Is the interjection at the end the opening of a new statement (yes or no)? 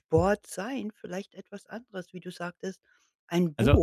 no